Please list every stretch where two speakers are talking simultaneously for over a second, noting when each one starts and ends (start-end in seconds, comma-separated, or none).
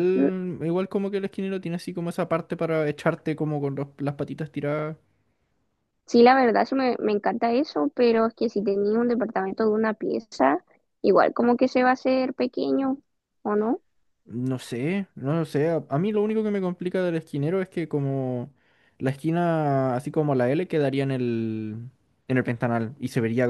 none